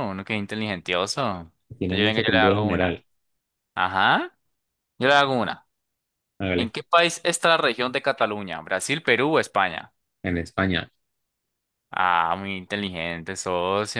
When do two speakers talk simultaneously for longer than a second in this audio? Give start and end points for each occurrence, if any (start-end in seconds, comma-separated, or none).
1.8-3.0